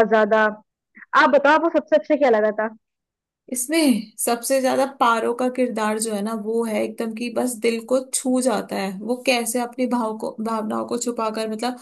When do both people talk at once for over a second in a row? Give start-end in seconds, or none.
none